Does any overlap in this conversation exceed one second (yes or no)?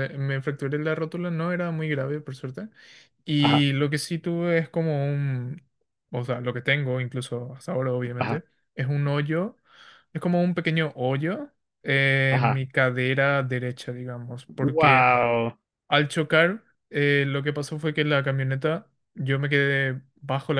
no